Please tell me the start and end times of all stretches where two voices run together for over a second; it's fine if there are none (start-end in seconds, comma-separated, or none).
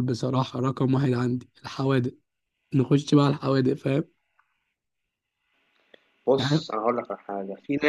none